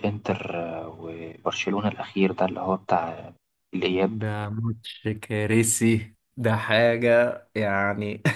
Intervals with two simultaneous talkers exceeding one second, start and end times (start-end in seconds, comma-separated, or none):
none